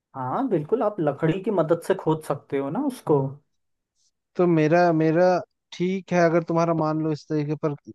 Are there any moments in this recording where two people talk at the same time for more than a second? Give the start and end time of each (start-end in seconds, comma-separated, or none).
none